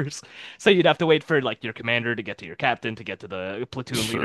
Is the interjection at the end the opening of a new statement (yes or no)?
yes